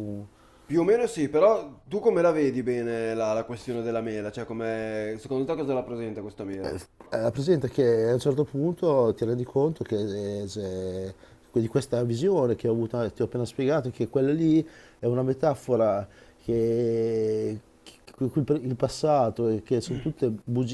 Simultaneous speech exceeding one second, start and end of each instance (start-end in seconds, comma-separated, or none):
none